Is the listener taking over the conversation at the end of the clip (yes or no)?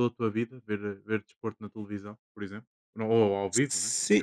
yes